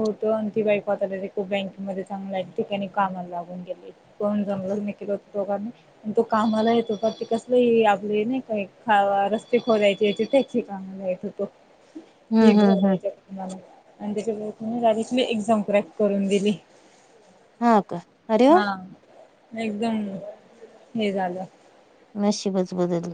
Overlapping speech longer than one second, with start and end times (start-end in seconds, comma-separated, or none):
none